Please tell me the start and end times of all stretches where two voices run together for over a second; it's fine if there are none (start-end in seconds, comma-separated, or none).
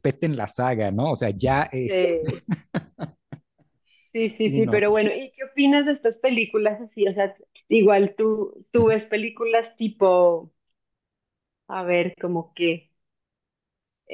none